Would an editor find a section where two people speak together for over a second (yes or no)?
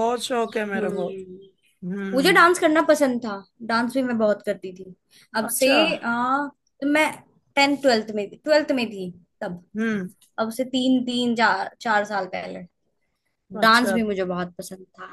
no